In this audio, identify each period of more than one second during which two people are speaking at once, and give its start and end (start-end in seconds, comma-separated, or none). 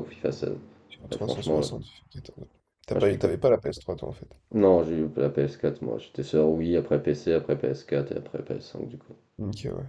none